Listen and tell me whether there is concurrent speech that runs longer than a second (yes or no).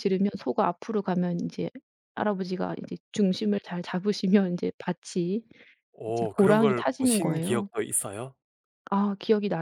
yes